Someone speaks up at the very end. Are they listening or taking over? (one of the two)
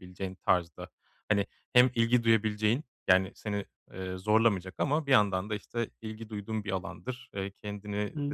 listening